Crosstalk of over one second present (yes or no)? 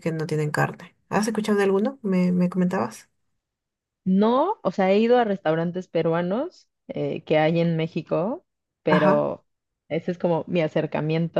no